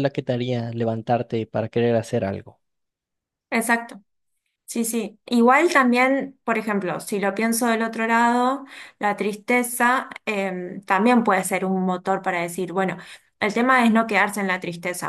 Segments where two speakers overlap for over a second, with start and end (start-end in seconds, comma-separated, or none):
none